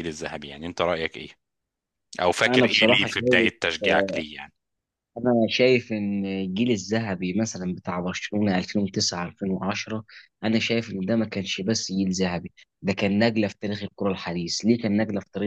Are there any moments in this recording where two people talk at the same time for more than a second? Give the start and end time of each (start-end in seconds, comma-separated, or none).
2.5-4.2